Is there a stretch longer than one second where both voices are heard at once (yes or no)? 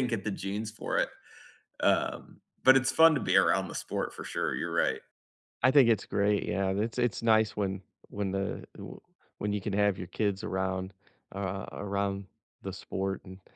no